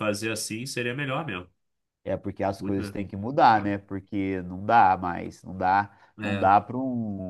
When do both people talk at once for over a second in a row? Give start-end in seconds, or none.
none